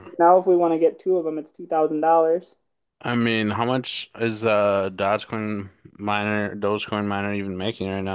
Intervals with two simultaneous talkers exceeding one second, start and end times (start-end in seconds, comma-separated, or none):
none